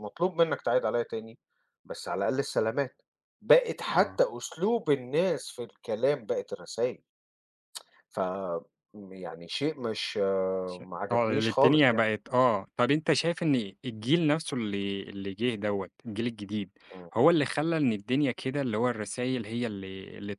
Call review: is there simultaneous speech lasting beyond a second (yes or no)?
yes